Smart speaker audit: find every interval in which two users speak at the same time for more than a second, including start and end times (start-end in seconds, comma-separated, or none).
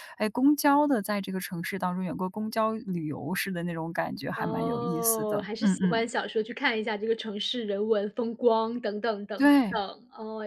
4.3-6.1